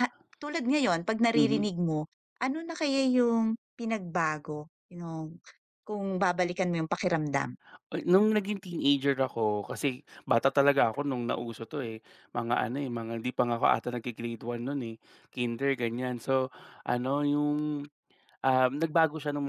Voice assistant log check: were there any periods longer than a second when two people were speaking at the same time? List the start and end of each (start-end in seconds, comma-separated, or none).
none